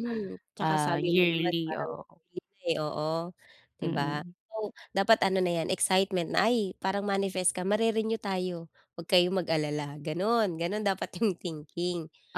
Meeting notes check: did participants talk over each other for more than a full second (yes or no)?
yes